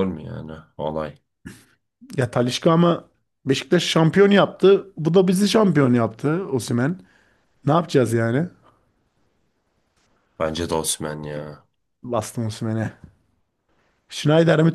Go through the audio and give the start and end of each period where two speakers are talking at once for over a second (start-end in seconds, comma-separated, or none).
none